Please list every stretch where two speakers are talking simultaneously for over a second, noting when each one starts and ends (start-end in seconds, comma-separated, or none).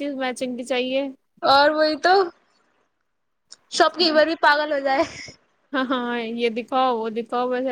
none